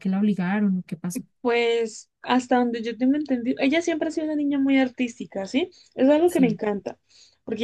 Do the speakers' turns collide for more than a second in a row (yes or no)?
no